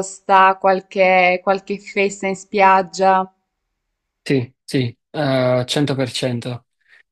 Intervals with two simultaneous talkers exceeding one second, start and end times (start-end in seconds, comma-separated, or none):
none